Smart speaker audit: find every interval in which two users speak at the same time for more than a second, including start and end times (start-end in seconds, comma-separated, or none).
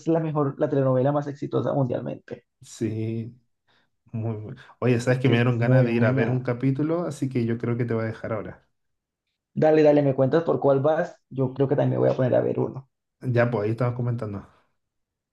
5.1-6.5